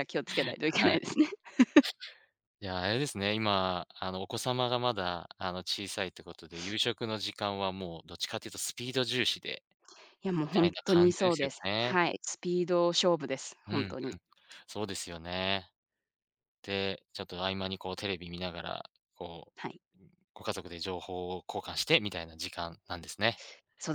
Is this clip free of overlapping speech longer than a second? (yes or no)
no